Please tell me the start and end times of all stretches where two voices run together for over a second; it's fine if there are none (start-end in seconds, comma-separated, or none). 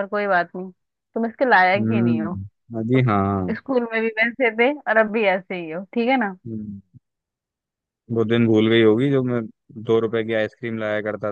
none